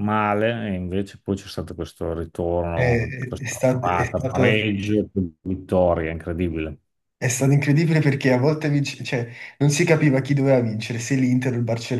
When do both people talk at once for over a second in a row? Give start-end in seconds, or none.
2.7-4.6